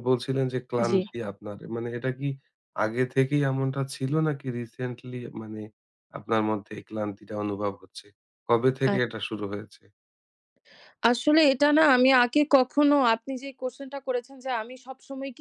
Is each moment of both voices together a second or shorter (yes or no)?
yes